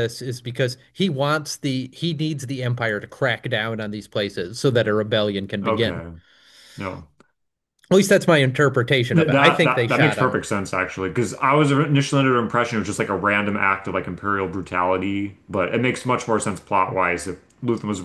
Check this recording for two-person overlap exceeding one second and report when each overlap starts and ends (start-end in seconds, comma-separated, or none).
9.2-10.4